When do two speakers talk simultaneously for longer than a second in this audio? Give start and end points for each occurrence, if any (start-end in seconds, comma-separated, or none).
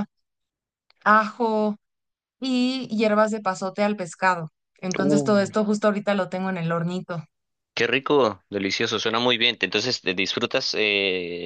none